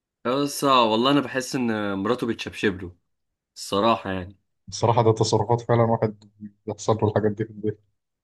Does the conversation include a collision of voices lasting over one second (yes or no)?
no